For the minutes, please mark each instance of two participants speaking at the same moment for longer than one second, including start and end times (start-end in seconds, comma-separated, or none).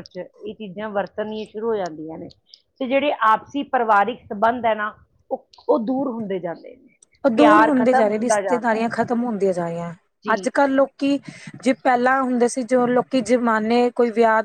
7.3-8.8